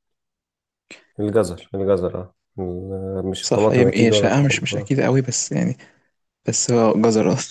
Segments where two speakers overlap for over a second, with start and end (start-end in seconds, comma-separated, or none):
3.4-4.9